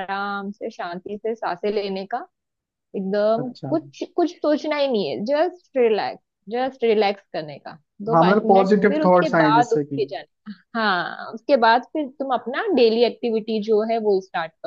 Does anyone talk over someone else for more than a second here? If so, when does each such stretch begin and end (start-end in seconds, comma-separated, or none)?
8.1-10.0